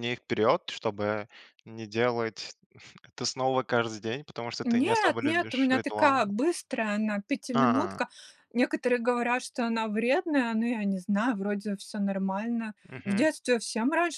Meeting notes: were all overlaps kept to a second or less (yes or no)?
no